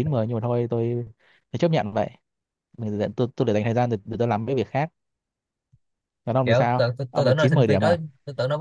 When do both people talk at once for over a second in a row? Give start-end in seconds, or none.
6.4-8.0